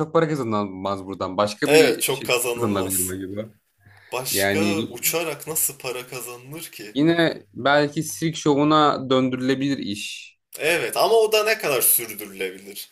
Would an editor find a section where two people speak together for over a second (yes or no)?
yes